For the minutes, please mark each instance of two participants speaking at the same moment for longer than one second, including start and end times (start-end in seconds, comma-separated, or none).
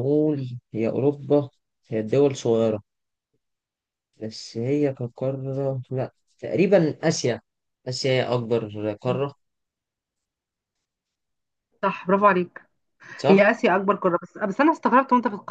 none